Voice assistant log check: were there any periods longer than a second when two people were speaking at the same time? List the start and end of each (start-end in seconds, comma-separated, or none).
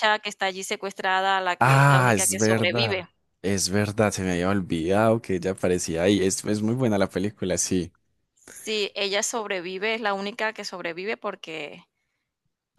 1.6-3.0